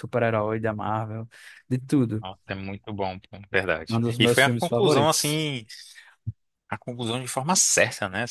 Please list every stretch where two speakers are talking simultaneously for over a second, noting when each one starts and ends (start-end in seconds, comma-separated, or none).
3.9-5.4